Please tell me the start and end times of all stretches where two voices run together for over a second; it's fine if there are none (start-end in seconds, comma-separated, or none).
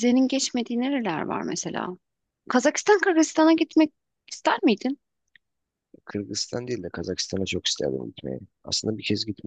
none